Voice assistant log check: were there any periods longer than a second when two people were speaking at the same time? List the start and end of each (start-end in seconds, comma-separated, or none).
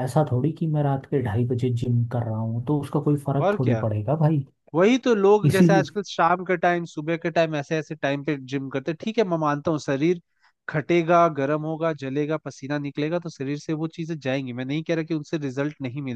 none